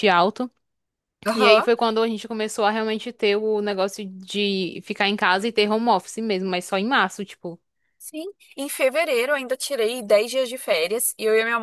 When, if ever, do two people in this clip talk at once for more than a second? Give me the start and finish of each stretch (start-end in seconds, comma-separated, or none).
none